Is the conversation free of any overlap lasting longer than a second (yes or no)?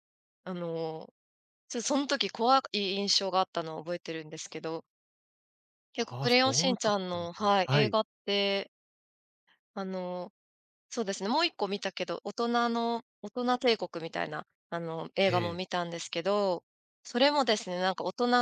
no